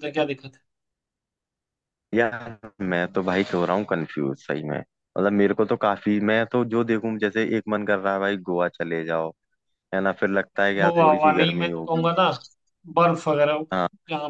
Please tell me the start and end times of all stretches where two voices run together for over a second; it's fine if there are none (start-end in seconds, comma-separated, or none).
10.6-12.1